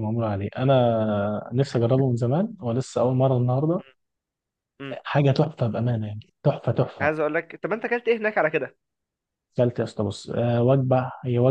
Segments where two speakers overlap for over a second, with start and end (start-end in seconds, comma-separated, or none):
none